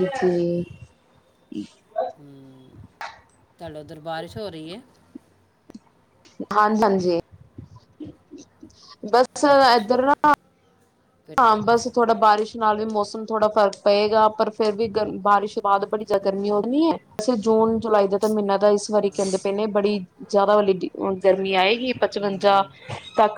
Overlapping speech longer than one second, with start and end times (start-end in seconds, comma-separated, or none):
none